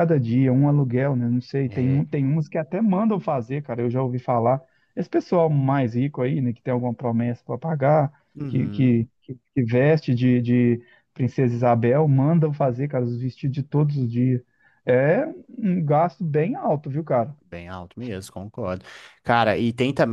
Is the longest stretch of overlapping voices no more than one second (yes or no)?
yes